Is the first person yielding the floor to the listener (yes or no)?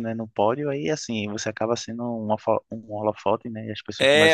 yes